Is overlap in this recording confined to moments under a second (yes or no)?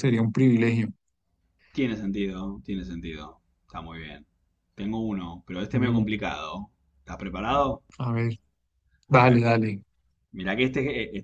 yes